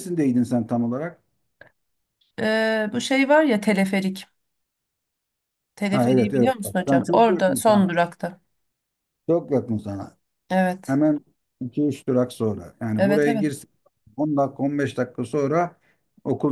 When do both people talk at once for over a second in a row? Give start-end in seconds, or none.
5.9-7.9